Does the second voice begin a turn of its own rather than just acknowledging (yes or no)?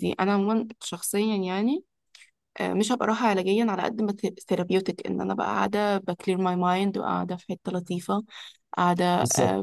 no